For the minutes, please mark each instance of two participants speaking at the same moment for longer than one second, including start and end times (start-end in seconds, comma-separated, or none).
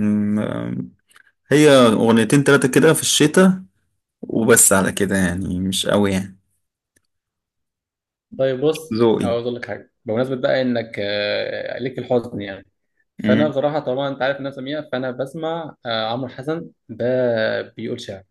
none